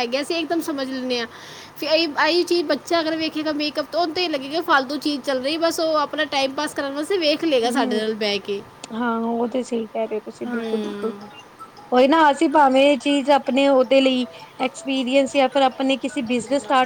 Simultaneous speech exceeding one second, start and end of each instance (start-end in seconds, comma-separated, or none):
none